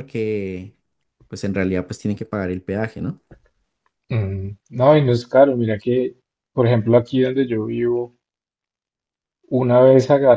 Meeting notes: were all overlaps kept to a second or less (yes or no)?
yes